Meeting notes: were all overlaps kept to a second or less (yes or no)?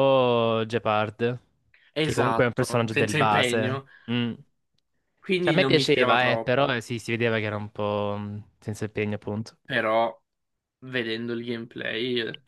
no